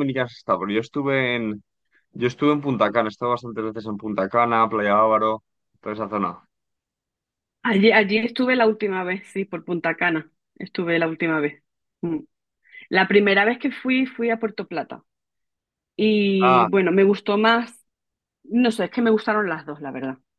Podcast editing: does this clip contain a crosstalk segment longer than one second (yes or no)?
no